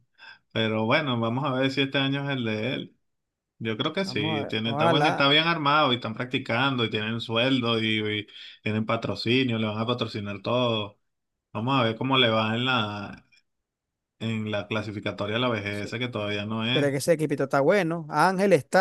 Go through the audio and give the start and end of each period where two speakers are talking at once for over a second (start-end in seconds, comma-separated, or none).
4.0-5.3